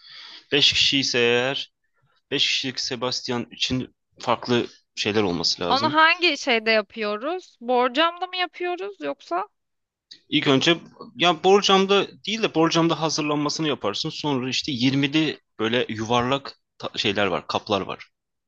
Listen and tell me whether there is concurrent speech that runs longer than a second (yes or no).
no